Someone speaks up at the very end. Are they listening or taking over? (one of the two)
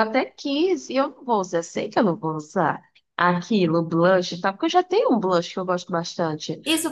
taking over